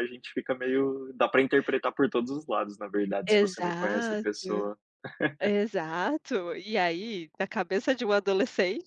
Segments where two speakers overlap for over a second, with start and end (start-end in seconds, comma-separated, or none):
3.3-4.7